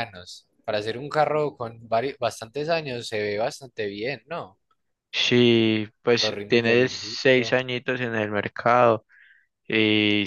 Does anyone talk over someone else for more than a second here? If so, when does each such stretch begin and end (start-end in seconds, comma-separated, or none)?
6.2-7.6